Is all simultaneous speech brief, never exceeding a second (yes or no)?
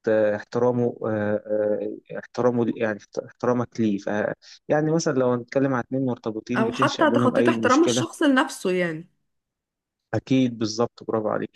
no